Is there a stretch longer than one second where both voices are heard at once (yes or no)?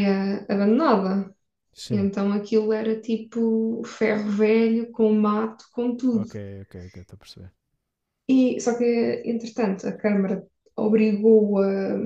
no